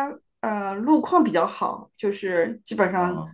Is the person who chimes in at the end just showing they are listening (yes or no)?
yes